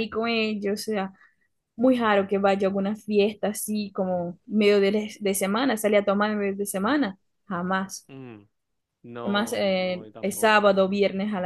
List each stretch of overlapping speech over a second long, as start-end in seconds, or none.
9.2-10.9